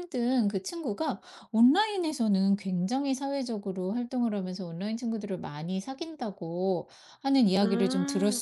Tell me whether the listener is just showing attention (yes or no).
yes